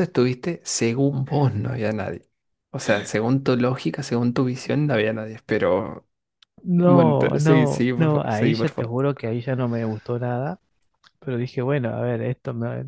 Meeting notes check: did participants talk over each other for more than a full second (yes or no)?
yes